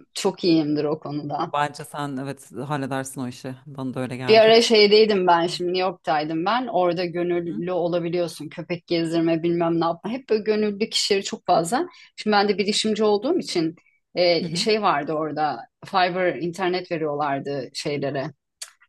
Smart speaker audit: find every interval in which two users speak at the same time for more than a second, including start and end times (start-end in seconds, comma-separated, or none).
none